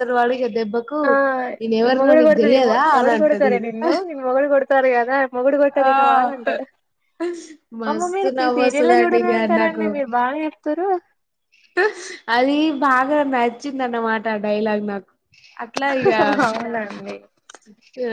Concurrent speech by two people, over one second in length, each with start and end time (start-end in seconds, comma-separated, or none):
7.9-9.8